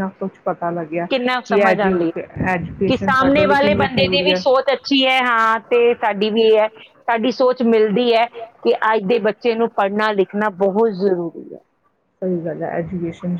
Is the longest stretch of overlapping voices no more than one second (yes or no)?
no